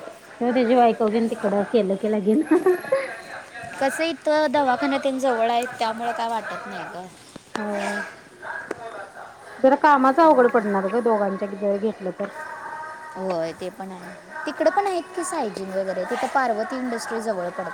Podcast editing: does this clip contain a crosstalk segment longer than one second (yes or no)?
no